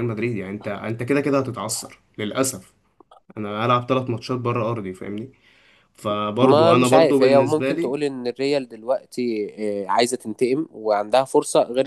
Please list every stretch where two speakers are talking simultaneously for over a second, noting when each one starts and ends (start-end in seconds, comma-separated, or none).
6.4-7.9